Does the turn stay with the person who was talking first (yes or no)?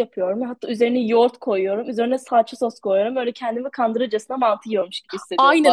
no